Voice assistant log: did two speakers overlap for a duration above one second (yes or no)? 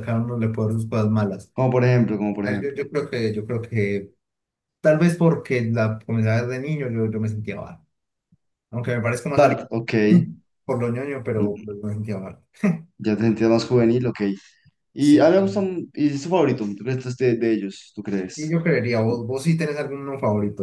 no